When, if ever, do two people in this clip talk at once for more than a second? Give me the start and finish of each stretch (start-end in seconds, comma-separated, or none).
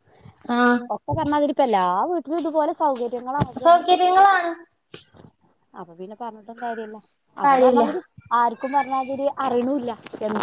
none